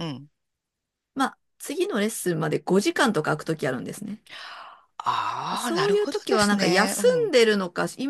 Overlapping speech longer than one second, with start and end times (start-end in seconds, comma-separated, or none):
5.6-7.3